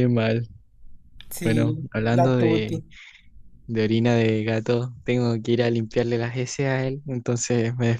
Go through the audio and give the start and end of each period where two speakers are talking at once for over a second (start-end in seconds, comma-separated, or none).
1.4-2.8